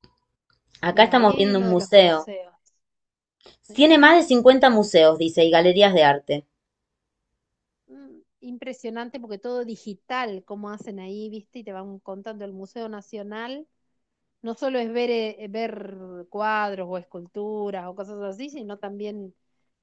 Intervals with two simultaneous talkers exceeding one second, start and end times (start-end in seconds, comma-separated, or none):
0.9-2.3